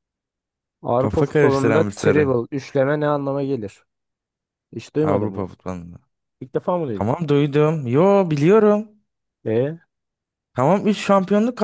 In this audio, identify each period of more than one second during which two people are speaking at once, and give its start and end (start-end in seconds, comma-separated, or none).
1.0-2.3